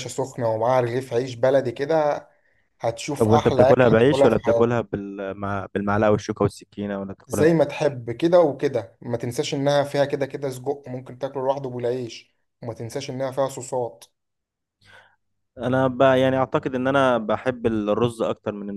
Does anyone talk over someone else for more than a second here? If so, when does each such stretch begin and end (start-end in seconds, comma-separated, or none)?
3.2-4.8